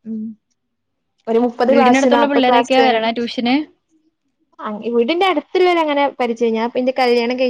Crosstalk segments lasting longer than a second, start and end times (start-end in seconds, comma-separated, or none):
1.7-3.0